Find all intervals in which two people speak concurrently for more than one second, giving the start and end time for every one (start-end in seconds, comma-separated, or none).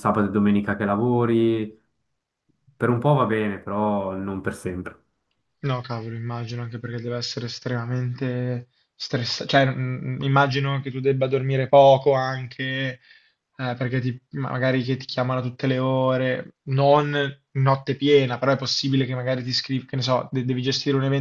none